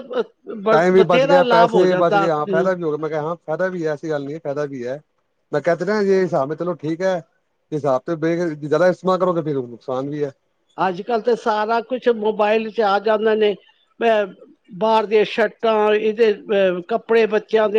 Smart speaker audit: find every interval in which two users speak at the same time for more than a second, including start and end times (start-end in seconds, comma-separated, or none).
0.7-2.7